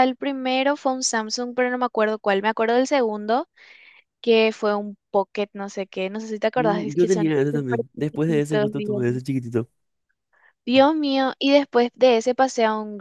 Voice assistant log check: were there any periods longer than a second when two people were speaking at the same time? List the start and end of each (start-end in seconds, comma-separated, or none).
6.5-9.1